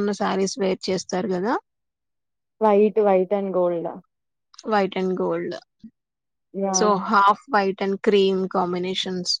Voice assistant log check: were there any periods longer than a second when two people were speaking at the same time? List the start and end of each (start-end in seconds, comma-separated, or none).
none